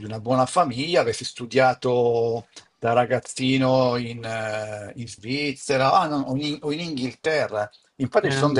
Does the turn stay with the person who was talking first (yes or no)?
yes